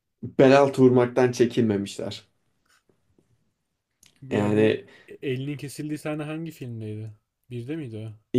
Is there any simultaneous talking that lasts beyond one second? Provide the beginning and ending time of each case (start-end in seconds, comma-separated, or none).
none